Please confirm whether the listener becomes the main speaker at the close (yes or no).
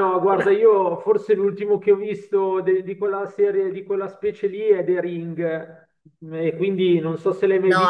yes